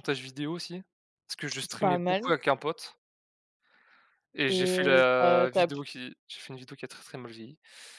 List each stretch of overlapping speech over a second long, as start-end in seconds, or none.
4.5-5.8